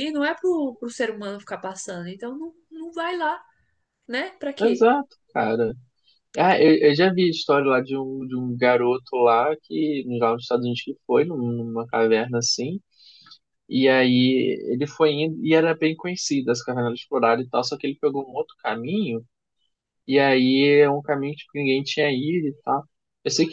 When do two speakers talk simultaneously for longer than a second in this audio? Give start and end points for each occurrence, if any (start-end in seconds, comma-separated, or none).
none